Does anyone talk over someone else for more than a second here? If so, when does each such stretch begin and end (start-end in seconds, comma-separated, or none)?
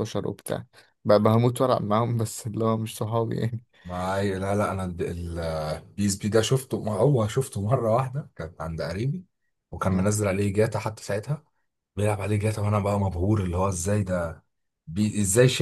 none